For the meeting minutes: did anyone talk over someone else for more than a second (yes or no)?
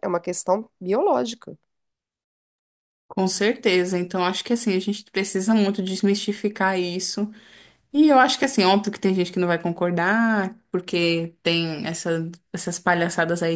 no